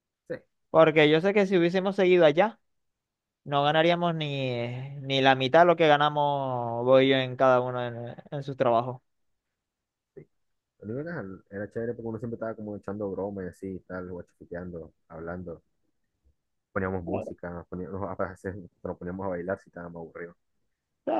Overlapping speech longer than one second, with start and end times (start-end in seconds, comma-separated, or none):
none